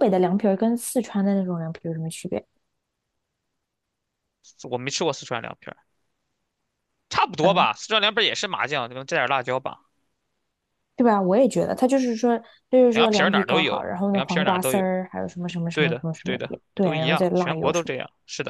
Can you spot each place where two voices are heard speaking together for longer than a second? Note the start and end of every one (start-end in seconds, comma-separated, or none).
12.9-14.8, 15.7-17.9